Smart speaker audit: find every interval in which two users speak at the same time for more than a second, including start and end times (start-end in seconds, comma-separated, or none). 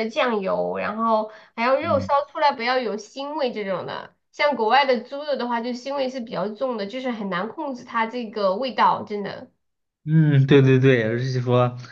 none